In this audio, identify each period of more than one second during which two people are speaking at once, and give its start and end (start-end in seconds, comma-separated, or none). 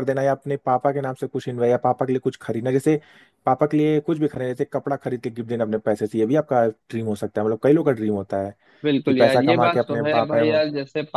9.1-10.6